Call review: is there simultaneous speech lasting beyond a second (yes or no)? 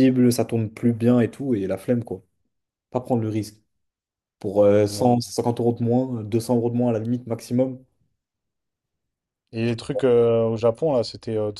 no